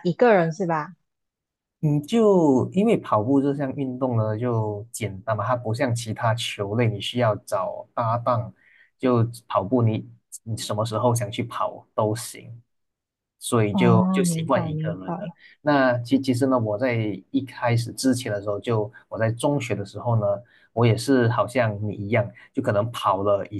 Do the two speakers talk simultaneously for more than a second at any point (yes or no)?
yes